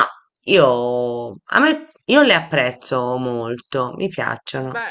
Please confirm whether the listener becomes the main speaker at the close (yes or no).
yes